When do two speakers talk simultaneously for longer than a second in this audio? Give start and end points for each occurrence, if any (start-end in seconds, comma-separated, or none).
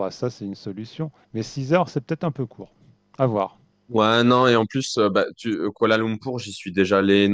none